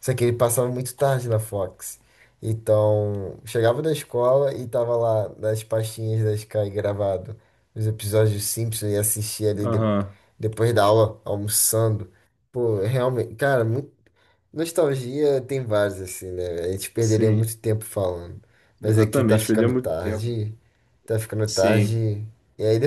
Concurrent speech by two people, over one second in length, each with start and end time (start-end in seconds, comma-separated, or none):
18.8-20.3